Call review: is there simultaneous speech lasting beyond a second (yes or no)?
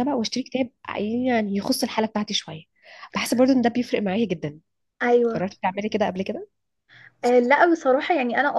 no